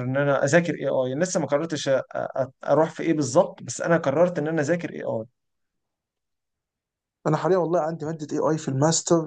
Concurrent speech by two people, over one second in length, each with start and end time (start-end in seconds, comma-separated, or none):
none